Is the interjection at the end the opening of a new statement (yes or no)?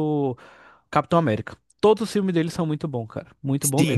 yes